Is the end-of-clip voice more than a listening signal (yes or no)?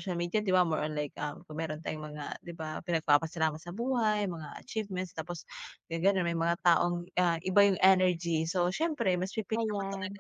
no